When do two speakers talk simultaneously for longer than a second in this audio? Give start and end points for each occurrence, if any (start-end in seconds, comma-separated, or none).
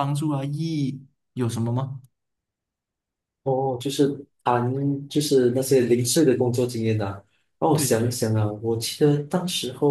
none